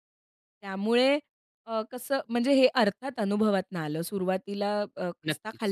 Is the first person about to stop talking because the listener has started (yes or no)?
no